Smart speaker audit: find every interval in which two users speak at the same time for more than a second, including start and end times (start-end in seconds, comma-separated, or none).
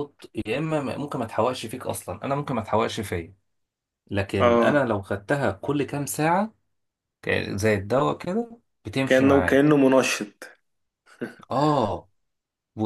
none